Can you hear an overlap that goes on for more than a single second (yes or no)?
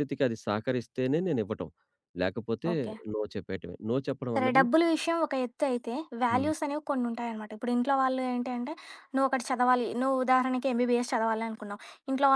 no